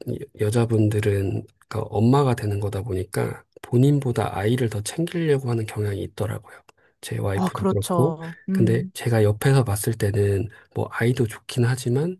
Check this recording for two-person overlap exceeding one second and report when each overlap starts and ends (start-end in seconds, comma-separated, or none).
7.3-8.9